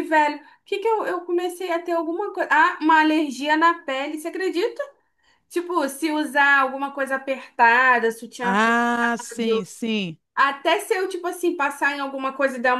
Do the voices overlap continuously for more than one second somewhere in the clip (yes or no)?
yes